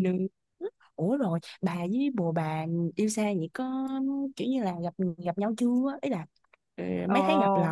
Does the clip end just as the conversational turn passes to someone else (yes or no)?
yes